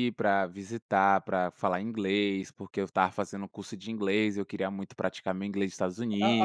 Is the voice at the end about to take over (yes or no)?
yes